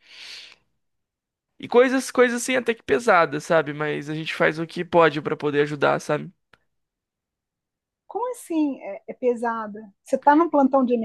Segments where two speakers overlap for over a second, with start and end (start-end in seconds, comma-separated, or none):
none